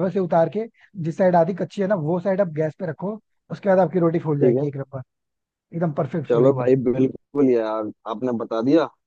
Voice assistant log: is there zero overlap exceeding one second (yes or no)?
yes